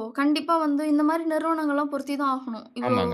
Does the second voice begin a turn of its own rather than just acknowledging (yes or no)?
no